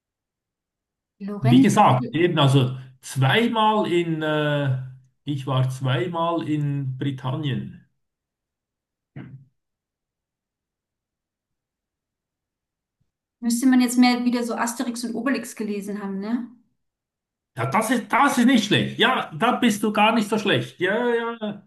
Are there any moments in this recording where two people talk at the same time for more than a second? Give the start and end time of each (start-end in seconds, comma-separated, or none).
none